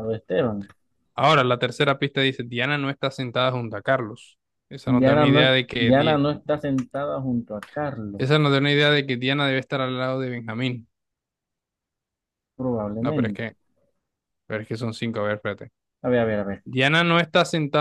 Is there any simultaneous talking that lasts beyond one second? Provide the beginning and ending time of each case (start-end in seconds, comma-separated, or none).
4.8-6.2